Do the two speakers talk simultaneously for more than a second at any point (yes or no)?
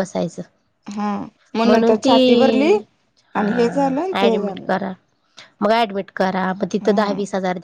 yes